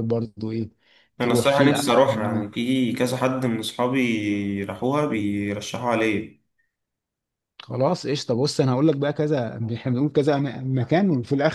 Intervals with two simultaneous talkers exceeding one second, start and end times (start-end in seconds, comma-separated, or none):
1.2-2.4